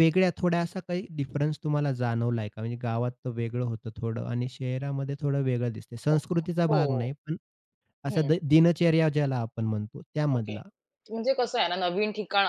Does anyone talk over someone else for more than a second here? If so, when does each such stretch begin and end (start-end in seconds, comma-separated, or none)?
none